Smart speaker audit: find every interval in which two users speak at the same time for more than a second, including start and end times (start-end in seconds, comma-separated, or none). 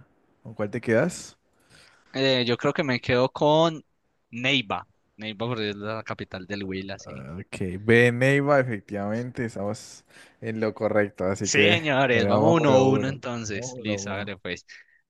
11.4-14.3